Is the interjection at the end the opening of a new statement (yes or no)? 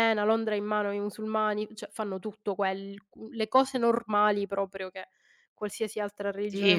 yes